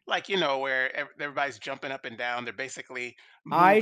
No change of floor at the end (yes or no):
no